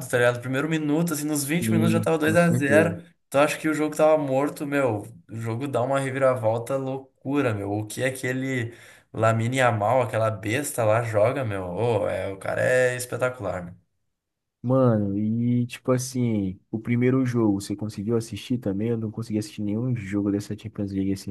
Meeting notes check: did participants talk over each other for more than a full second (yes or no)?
yes